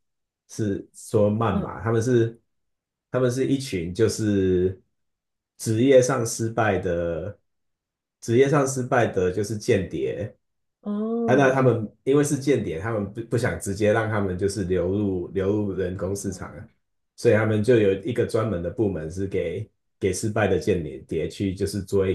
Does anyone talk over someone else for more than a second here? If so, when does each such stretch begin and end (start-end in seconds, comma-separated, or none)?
none